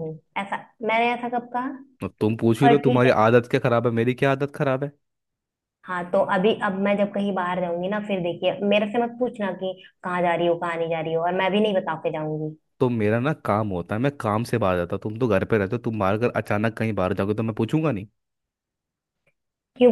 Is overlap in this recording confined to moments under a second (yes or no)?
yes